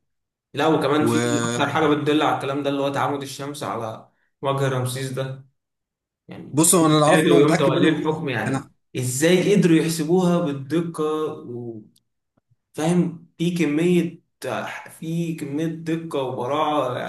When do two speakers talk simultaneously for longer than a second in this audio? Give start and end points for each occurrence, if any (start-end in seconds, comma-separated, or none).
6.8-8.7